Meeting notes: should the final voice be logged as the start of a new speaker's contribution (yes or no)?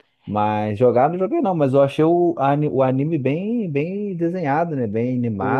yes